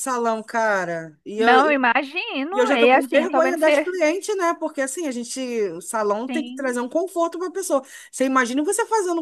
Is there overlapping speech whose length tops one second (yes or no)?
yes